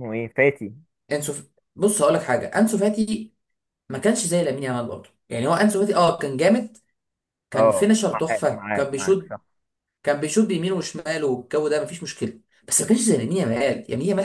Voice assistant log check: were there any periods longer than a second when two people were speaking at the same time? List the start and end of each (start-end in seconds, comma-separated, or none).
7.5-9.3